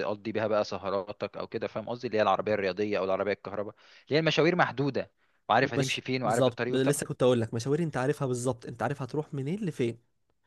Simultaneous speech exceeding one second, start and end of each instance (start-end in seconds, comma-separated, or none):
5.6-7.0